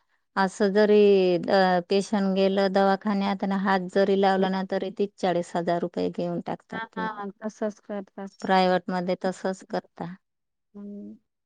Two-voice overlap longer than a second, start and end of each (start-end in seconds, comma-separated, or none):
none